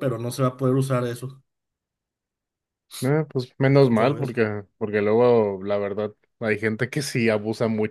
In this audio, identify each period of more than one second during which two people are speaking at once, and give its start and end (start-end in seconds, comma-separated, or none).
none